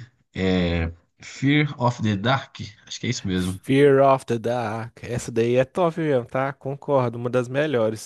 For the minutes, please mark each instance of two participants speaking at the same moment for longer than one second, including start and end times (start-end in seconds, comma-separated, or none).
none